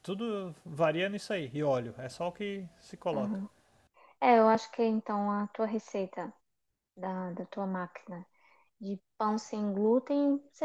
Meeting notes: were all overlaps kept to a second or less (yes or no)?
yes